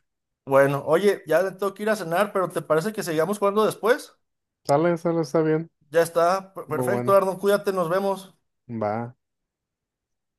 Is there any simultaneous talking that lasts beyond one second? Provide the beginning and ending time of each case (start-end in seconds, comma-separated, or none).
none